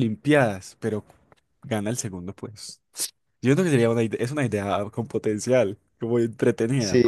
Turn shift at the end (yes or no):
yes